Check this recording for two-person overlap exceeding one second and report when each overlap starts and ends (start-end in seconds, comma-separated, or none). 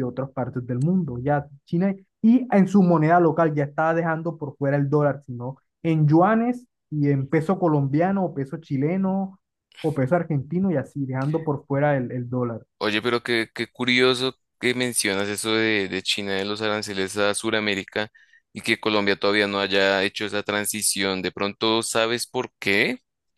none